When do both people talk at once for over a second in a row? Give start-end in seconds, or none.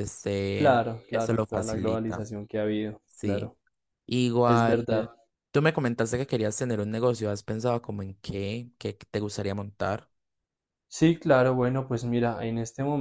0.5-2.2